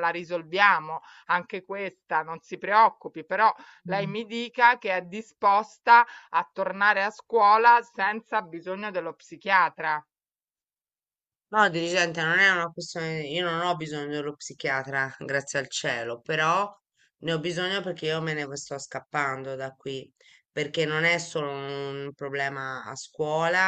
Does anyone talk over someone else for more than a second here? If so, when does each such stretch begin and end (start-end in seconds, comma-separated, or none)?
none